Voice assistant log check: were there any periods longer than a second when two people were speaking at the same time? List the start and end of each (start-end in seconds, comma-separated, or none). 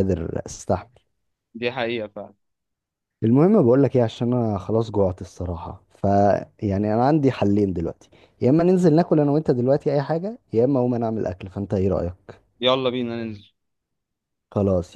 none